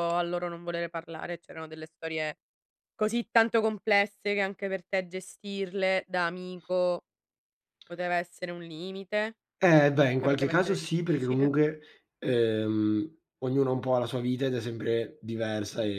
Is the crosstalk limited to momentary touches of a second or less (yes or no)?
no